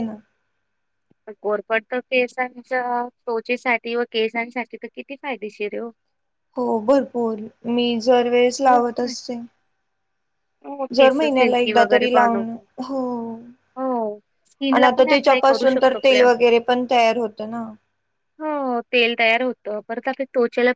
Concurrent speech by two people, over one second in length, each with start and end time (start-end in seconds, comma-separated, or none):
10.9-12.5, 14.7-16.2